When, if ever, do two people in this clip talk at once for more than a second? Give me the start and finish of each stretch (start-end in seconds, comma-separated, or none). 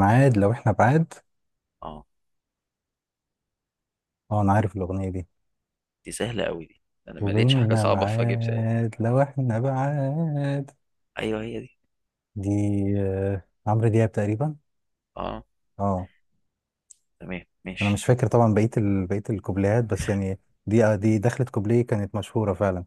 7.2-8.7